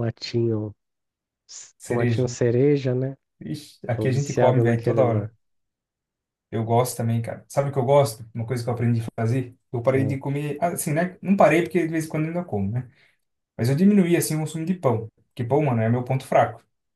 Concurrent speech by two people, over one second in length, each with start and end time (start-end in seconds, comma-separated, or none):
3.9-5.3